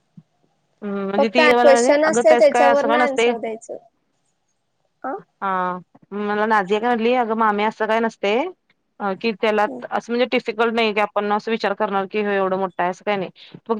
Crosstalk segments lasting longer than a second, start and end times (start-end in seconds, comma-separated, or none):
1.2-3.3